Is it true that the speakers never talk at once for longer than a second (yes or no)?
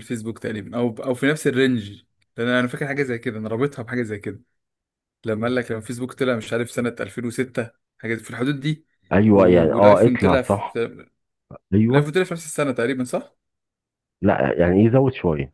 no